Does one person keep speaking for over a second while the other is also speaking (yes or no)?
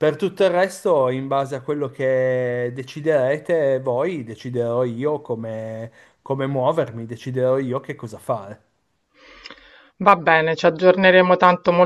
no